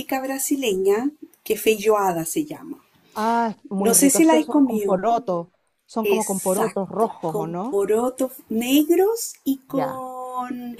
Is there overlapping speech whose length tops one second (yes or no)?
yes